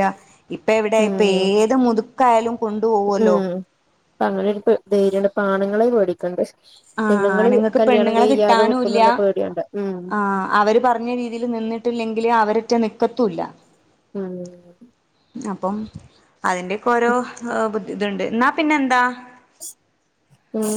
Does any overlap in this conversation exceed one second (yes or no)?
yes